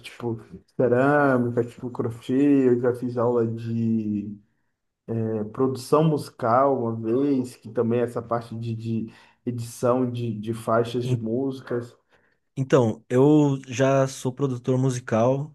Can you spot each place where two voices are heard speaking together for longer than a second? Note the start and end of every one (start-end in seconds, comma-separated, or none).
none